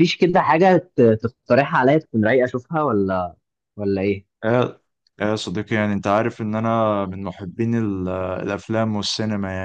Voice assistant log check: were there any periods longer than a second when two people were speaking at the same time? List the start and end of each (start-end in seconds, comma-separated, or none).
none